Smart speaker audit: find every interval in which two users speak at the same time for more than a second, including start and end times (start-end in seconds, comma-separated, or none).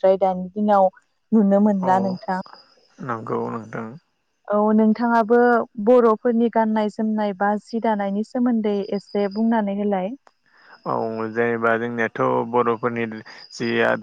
none